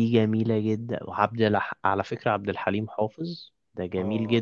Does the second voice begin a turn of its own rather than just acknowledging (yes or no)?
yes